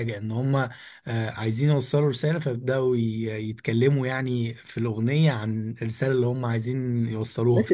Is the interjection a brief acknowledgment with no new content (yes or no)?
no